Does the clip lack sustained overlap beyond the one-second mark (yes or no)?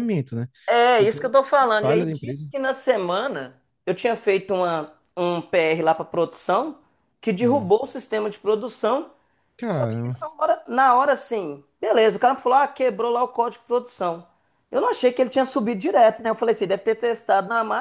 no